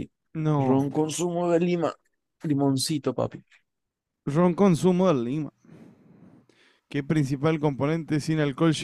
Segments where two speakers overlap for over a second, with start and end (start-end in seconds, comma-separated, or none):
none